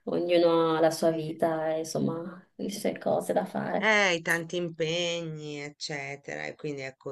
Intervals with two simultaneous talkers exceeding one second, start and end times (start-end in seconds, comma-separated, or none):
none